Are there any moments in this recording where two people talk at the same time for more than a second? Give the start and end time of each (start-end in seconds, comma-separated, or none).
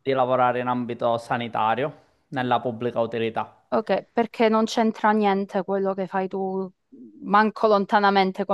none